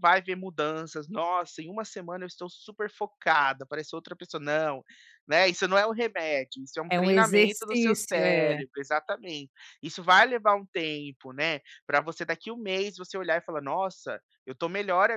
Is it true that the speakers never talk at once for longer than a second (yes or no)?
no